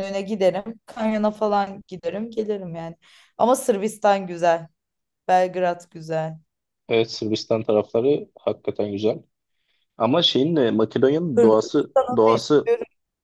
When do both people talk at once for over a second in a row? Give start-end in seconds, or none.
11.3-12.7